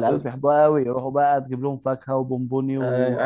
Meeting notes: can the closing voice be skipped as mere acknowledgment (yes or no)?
no